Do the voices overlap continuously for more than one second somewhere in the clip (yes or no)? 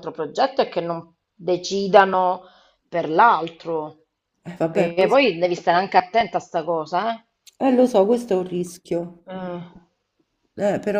no